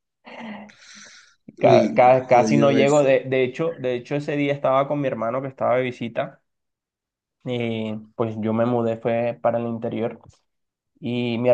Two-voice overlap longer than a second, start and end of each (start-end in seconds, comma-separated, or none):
1.6-3.2